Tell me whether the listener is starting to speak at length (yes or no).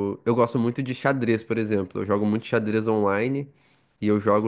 no